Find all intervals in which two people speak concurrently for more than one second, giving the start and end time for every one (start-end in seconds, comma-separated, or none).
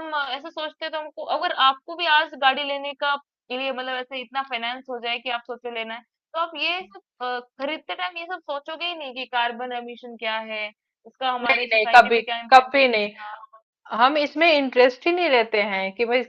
11.4-13.1